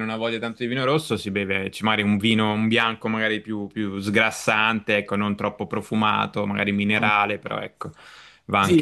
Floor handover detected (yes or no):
yes